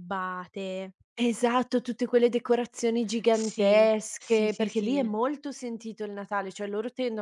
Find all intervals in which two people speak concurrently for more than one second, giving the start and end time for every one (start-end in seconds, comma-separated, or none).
3.3-5.1